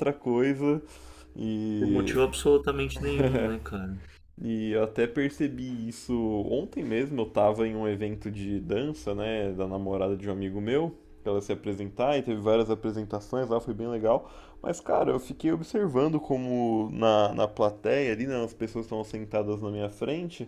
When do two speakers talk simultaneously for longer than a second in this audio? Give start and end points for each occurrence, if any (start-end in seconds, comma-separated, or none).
none